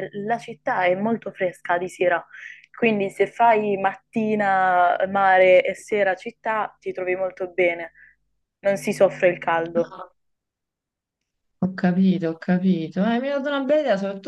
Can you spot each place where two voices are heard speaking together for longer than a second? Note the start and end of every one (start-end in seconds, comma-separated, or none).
none